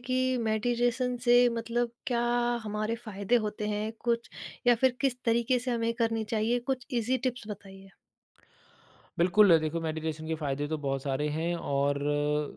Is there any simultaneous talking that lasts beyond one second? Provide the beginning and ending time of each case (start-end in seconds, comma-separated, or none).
none